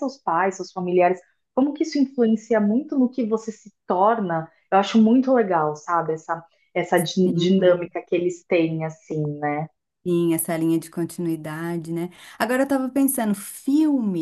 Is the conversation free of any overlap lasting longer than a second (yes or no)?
yes